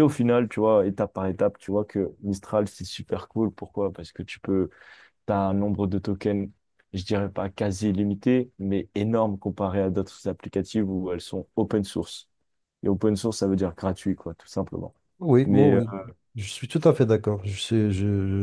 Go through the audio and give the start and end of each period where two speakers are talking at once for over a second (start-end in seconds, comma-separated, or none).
none